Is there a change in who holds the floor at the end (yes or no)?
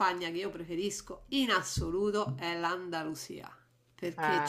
no